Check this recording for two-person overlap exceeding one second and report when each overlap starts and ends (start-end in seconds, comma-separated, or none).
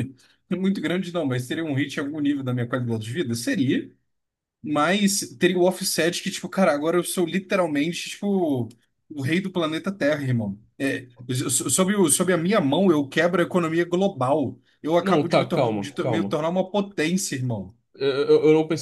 15.0-16.4